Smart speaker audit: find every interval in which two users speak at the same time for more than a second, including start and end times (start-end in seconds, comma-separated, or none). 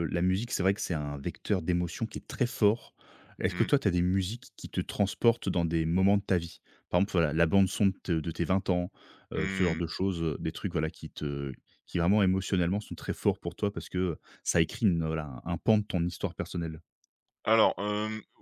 none